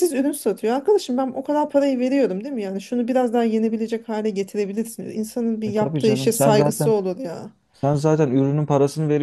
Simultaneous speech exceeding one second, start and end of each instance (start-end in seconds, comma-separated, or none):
5.7-6.9